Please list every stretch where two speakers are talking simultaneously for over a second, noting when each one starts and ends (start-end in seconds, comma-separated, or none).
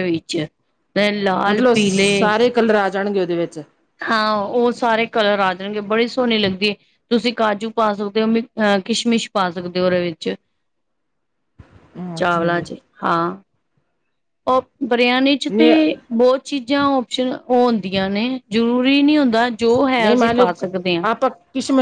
none